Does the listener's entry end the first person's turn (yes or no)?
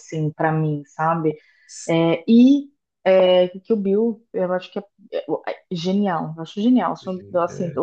no